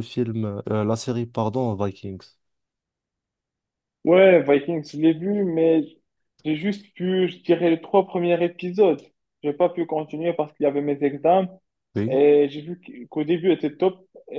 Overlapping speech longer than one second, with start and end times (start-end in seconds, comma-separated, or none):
none